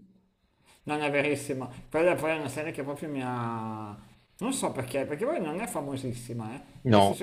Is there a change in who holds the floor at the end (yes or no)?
no